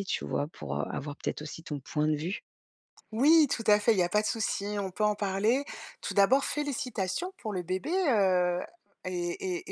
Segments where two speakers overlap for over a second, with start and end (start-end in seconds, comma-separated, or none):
none